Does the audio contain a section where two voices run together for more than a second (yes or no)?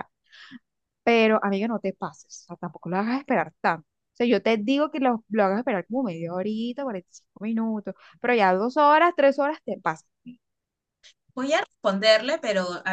no